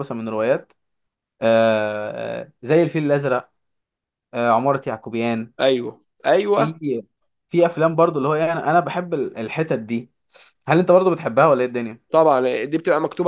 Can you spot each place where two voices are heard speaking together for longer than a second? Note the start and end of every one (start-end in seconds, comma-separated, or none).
none